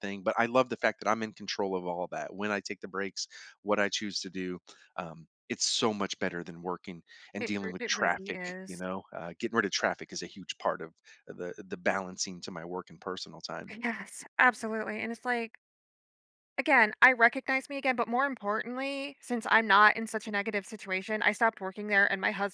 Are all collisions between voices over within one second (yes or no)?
no